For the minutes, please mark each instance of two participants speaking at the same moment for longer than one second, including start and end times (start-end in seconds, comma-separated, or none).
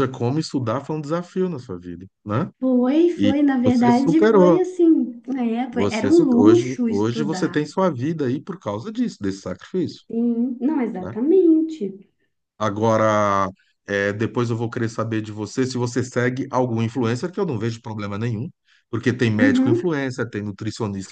3.2-4.6, 5.7-7.6